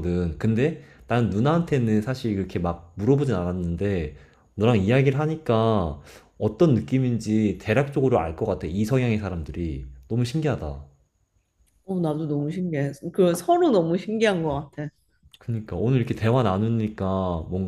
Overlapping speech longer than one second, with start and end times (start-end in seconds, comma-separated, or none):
none